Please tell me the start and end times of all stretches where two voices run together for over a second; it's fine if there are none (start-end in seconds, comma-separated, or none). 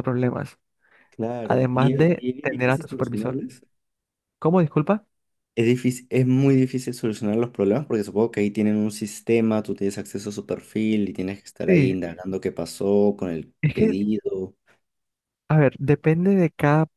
1.4-3.4